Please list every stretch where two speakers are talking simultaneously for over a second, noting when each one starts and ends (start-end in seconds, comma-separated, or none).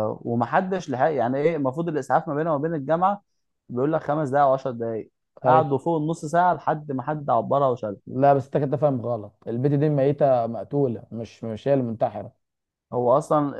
none